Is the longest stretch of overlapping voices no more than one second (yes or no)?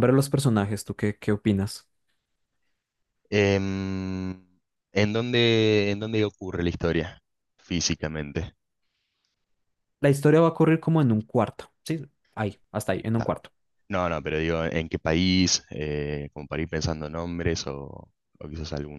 yes